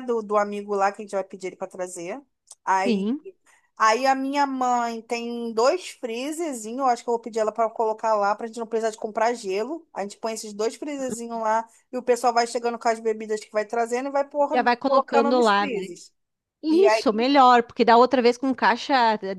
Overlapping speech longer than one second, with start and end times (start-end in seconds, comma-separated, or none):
14.5-15.9